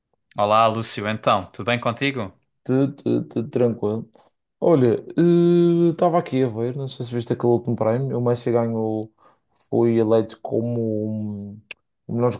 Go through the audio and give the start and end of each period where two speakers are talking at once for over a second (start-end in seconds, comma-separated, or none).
none